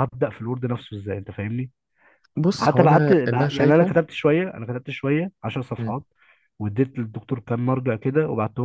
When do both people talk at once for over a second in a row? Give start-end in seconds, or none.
2.6-3.9